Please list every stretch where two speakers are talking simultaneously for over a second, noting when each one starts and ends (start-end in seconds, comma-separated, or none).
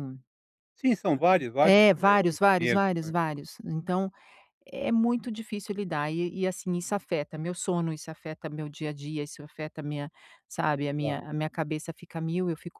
1.6-3.1